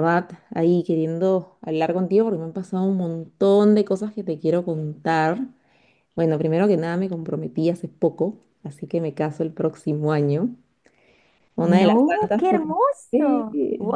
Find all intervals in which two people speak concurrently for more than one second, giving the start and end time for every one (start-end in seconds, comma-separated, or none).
11.6-13.5